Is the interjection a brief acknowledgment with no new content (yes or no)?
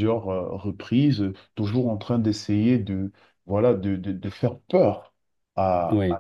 yes